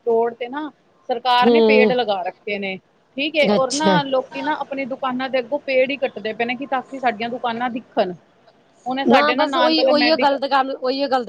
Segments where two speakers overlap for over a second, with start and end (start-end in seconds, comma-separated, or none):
none